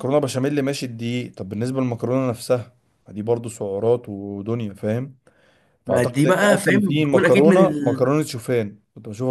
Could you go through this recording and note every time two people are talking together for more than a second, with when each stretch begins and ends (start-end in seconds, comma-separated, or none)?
5.8-8.1